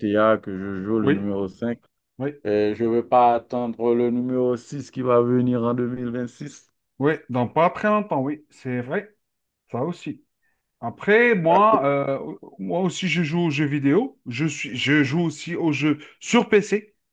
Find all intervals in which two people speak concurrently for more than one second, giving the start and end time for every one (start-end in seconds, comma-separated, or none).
none